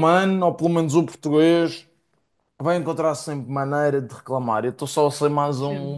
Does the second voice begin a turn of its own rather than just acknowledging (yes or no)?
no